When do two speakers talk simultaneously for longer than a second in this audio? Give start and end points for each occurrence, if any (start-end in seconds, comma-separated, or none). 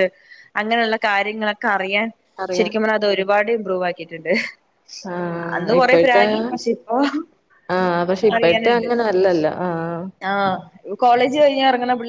none